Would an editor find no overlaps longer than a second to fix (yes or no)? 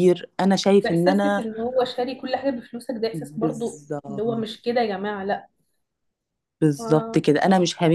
no